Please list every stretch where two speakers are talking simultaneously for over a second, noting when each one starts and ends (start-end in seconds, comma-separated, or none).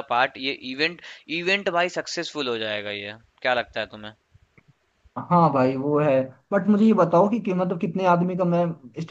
none